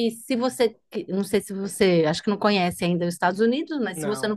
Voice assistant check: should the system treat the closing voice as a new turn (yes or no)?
no